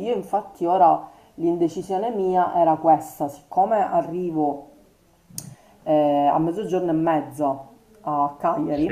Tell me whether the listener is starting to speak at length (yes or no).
no